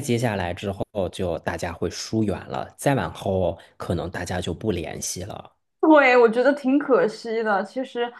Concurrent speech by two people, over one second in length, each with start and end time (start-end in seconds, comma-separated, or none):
none